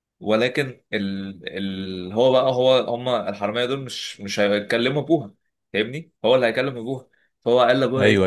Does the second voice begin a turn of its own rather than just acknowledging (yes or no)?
no